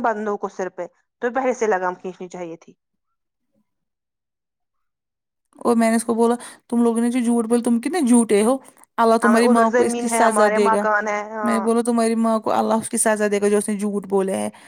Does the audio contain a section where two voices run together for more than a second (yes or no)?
yes